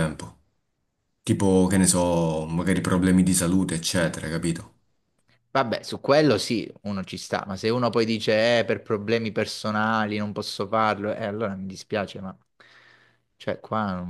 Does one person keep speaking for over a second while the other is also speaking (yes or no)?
no